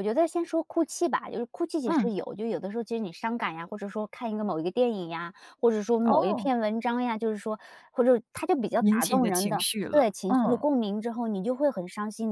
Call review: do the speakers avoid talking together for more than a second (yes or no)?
no